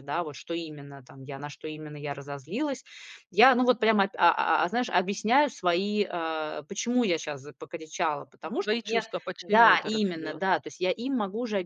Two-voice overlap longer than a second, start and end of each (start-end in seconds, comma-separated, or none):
8.6-10.4